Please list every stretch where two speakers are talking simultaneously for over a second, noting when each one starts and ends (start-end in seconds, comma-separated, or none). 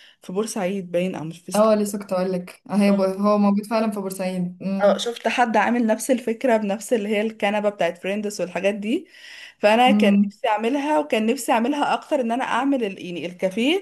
none